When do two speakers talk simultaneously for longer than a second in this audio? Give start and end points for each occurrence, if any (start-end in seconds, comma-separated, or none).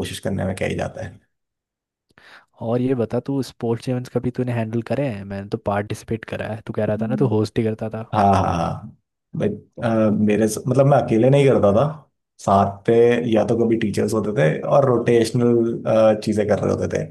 none